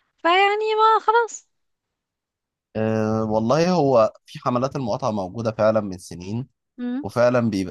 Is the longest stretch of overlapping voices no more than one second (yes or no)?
yes